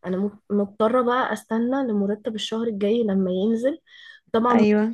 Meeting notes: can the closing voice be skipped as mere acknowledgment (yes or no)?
yes